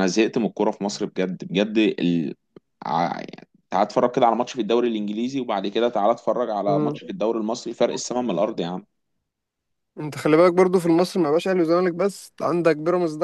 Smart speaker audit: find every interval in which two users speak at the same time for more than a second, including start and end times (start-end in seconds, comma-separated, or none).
none